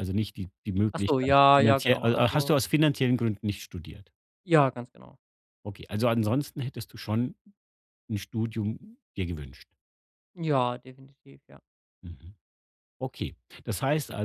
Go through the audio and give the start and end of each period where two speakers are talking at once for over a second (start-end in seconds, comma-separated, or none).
0.9-2.5